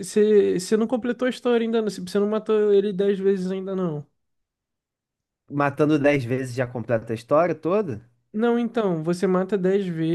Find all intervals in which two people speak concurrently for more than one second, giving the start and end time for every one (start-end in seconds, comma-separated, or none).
none